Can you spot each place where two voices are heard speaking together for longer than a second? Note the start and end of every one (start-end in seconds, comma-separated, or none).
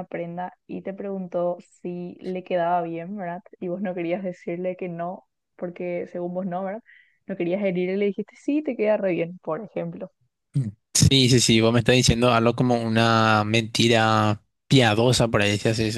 none